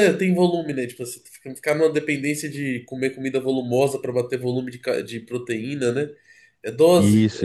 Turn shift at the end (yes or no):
yes